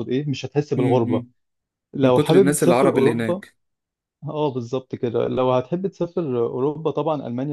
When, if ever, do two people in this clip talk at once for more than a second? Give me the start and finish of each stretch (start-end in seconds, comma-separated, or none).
2.0-3.4